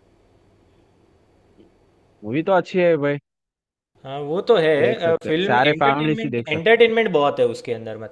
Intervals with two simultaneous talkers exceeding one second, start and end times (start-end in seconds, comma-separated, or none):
4.8-6.7